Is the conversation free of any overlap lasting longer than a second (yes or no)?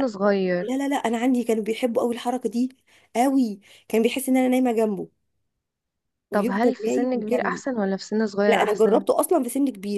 no